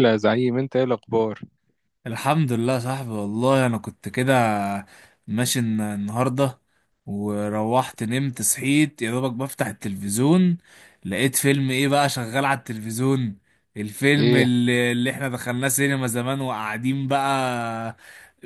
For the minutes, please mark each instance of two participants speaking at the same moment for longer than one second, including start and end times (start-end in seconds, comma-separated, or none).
none